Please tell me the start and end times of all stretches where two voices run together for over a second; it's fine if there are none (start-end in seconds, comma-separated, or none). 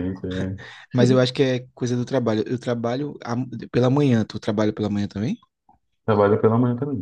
none